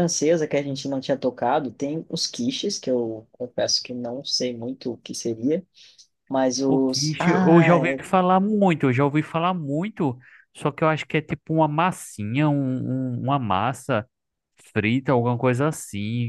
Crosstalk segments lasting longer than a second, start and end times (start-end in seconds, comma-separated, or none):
6.7-8.0